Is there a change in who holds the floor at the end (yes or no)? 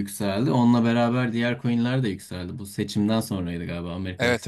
no